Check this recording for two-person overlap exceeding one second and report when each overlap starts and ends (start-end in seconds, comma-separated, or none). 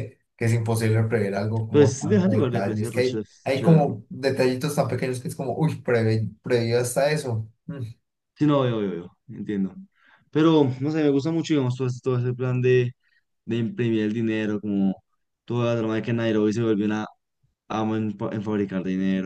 1.7-4.0